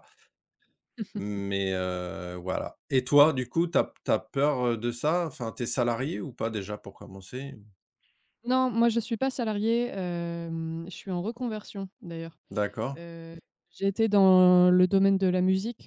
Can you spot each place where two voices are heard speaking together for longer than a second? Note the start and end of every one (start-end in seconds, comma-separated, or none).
none